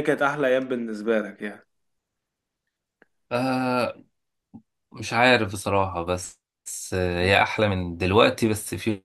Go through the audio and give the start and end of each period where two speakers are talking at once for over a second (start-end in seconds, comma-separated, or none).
none